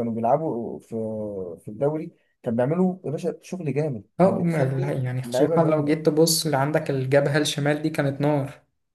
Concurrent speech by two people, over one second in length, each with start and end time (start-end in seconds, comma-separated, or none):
4.2-6.1